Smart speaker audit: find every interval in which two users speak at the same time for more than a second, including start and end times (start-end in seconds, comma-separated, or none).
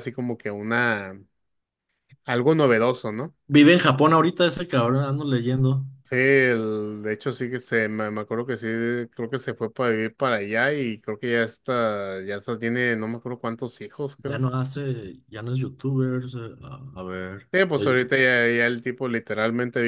none